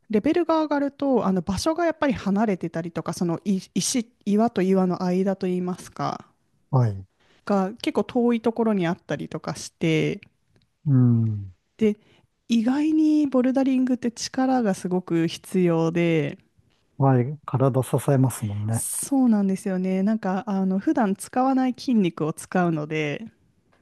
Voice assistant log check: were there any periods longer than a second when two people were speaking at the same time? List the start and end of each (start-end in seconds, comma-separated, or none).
none